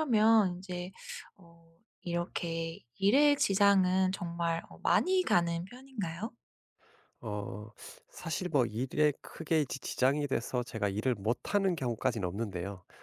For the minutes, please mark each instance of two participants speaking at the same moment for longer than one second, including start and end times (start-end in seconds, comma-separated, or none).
none